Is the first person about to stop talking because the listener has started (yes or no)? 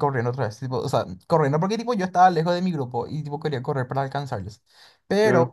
no